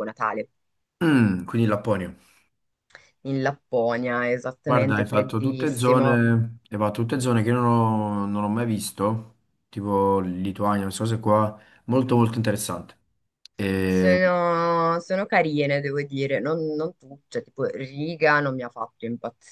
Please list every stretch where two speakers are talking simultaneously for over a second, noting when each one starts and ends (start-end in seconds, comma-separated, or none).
4.7-6.2